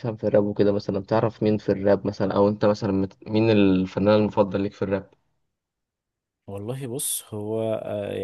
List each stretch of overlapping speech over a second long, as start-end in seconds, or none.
none